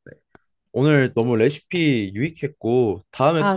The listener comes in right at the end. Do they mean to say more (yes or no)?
no